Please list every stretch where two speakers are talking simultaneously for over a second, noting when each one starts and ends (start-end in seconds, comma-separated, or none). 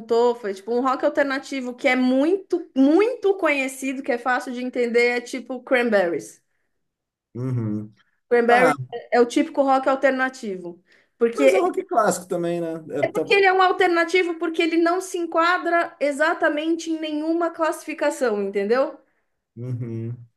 none